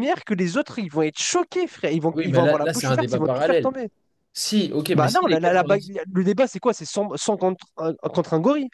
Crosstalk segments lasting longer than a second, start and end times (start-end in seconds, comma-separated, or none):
2.1-3.7